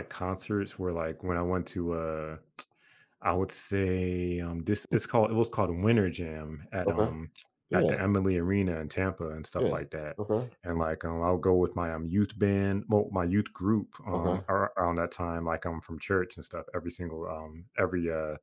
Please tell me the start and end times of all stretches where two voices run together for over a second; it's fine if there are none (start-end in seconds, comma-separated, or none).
none